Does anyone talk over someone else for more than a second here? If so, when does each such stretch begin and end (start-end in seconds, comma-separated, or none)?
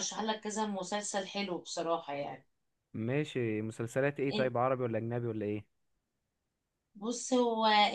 none